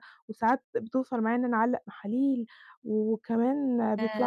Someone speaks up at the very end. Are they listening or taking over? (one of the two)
listening